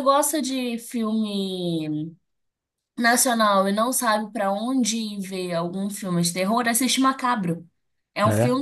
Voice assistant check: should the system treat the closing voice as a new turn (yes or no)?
no